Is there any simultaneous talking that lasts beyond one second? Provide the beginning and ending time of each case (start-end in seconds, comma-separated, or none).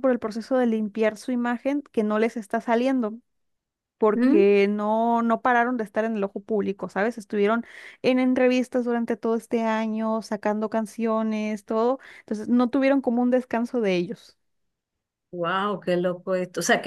none